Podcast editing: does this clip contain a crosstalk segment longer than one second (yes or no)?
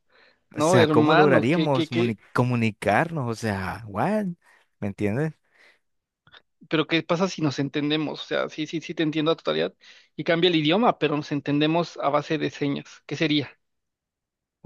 yes